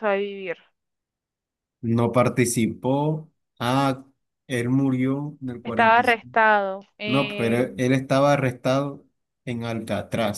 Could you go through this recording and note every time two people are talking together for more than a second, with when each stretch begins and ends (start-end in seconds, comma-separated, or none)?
none